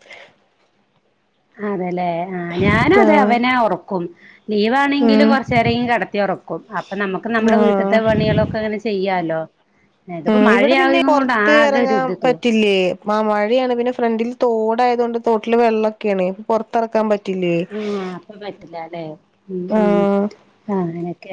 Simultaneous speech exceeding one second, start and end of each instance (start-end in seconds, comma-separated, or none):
10.3-12.3